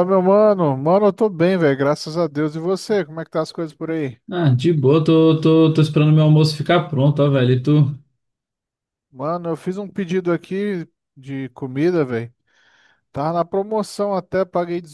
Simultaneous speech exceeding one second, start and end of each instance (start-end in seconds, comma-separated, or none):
none